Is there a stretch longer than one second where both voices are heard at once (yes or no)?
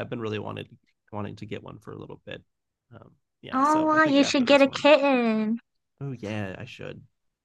yes